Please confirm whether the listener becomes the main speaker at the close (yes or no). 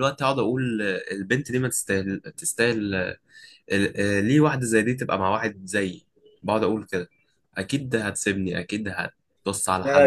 yes